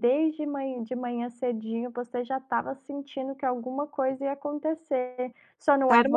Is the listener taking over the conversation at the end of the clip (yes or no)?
no